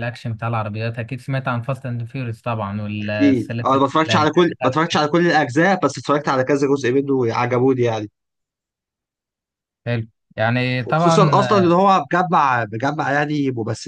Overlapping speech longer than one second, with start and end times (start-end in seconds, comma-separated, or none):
3.0-4.8